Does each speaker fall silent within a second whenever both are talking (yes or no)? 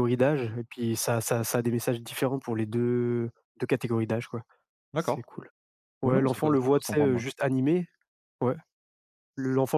no